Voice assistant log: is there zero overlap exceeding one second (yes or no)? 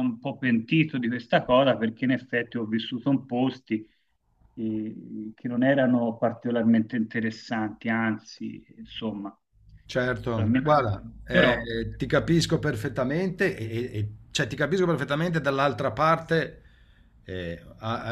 no